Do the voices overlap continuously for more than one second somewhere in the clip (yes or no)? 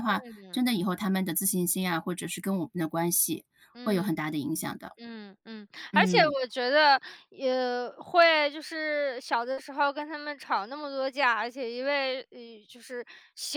no